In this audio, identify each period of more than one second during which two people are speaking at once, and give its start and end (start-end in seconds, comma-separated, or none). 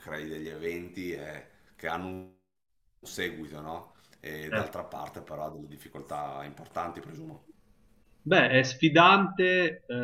none